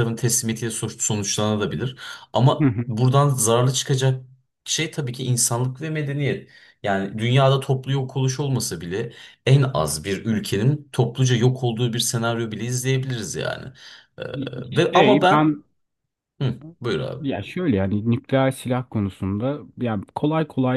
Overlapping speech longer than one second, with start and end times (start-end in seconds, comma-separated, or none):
none